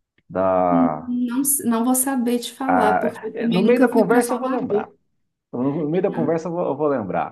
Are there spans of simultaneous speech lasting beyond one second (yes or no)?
yes